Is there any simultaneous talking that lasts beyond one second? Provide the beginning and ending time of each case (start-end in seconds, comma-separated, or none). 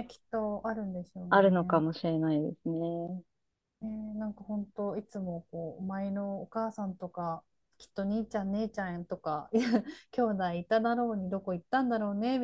none